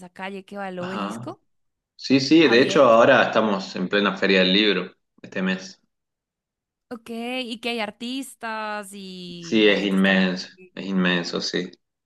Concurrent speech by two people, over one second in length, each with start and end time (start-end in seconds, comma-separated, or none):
9.4-10.7